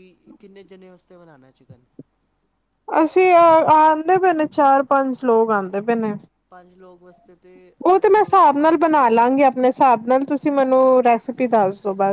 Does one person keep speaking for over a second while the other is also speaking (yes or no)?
yes